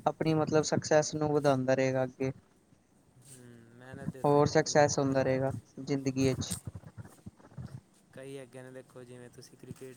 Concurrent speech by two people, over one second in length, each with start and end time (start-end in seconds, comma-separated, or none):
4.2-5.5